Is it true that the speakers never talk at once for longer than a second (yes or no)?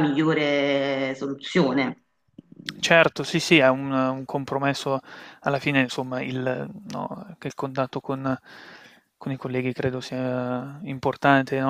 yes